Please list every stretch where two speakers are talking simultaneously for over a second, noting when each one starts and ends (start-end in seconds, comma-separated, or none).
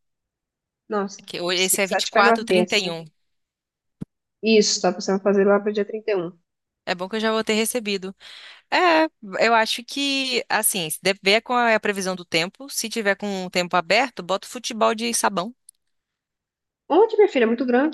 1.2-3.0